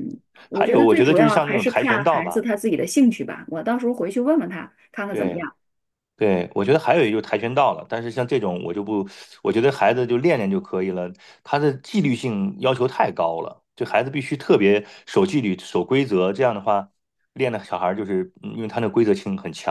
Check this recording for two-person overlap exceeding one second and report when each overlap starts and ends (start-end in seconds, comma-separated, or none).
0.5-2.5